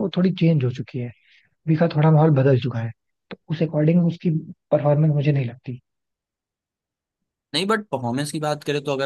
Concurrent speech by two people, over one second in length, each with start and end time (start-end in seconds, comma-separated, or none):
none